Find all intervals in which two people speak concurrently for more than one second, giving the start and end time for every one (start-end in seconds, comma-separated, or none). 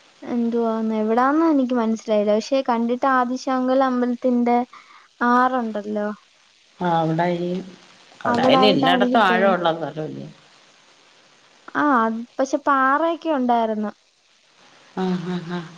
8.3-9.6